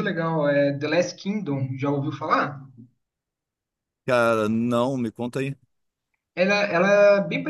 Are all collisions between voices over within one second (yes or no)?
yes